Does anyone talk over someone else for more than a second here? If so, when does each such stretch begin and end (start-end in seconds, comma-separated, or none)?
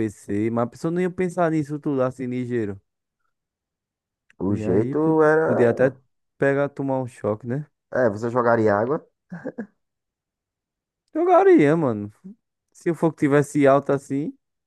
4.5-6.0